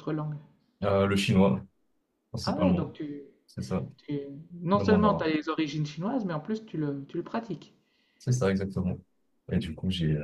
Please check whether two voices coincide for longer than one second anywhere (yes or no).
no